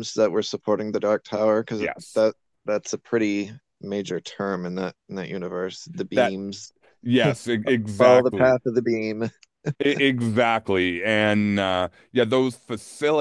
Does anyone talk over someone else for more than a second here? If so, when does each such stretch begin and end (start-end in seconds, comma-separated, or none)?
none